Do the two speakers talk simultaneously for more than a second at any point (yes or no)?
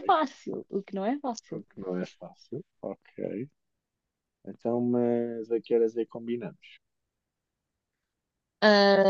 no